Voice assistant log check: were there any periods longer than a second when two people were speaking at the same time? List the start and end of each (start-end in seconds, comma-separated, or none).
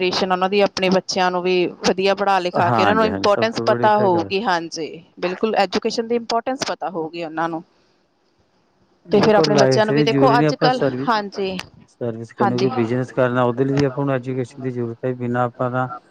2.7-4.3, 9.2-11.6